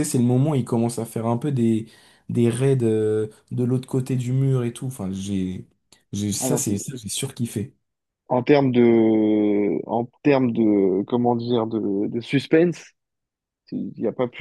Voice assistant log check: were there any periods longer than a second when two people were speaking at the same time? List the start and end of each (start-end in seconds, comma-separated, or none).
none